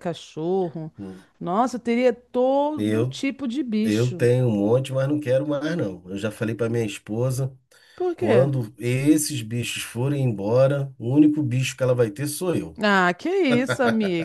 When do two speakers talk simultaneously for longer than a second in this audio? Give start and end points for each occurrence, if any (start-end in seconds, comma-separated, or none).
none